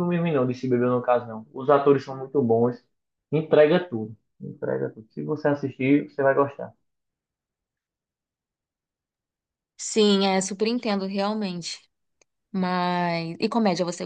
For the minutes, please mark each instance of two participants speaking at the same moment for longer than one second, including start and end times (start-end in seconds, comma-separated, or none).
none